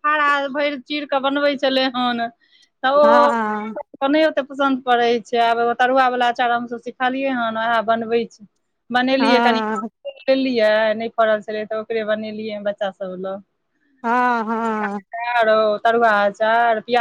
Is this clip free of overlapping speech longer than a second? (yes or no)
yes